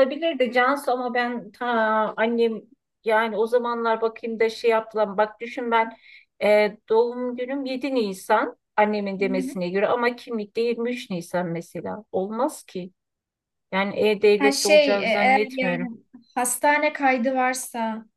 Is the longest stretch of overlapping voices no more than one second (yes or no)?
no